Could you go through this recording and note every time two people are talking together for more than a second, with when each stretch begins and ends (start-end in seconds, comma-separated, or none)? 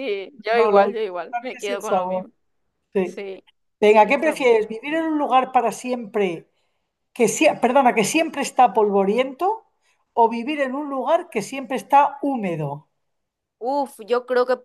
0.5-2.3